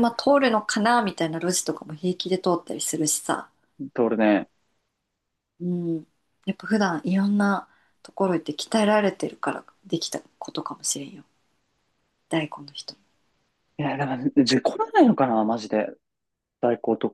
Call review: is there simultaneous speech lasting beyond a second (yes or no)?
no